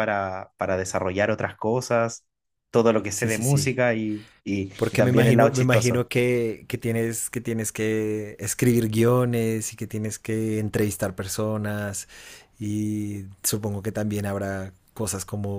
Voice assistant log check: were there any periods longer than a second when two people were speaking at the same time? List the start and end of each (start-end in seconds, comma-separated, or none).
4.8-6.0